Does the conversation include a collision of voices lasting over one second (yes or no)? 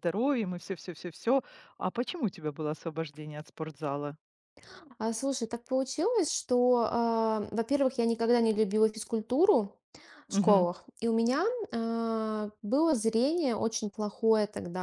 no